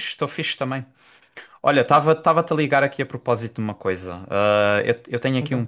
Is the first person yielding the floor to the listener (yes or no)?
no